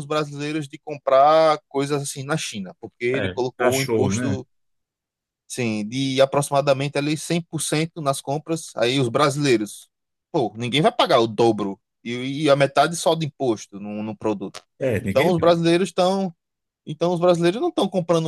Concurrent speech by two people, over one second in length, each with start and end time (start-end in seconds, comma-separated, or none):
3.1-4.4